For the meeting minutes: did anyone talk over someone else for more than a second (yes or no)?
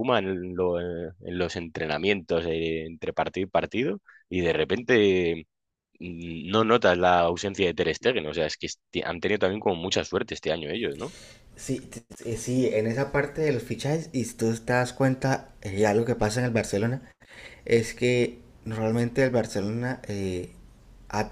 no